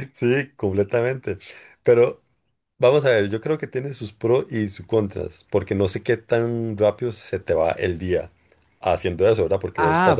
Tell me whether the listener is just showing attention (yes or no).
no